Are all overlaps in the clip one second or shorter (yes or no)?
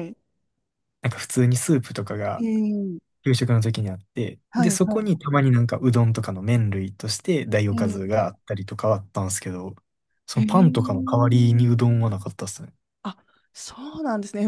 no